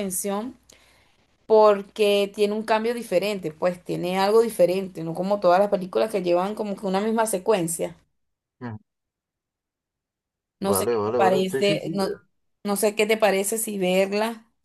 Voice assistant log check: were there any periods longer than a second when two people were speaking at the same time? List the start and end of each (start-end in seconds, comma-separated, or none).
10.6-11.9